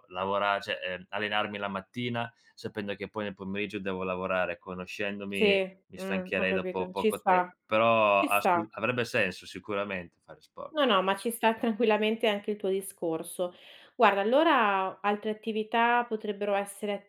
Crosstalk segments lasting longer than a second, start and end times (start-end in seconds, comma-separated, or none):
5.3-7.5